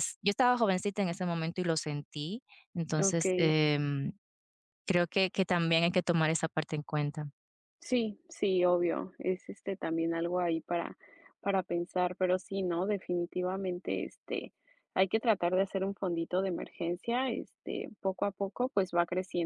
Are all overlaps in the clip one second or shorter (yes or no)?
yes